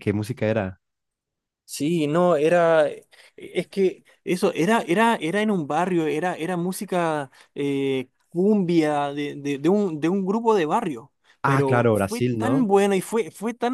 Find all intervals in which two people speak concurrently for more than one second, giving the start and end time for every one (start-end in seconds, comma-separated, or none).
11.4-12.7